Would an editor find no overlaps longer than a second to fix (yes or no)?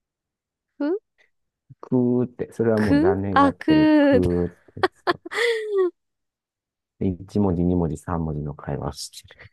no